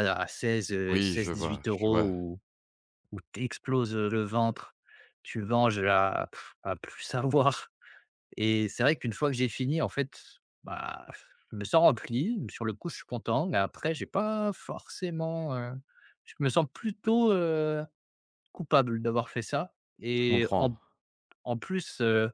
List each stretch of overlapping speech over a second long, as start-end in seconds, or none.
0.9-2.1